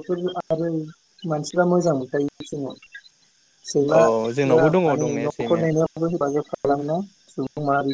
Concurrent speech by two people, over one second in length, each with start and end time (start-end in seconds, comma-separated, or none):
4.0-5.7